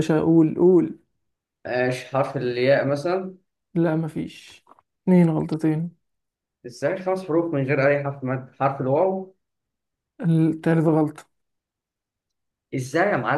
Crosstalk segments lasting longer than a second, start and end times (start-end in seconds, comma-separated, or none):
none